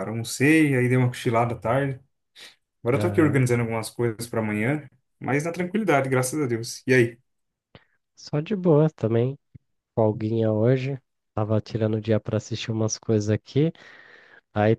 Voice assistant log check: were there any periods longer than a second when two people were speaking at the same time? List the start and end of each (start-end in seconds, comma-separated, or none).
none